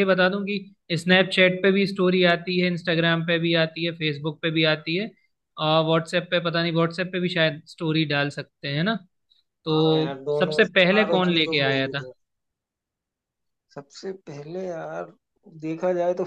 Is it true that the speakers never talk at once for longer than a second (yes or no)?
no